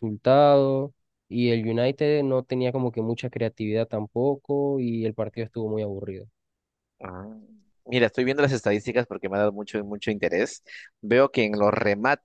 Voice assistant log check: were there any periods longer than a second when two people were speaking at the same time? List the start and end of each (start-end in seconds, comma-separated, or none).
none